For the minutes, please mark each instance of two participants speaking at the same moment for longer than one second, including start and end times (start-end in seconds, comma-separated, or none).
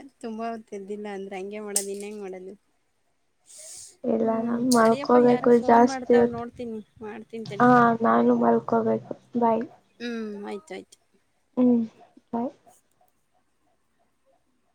4.2-6.4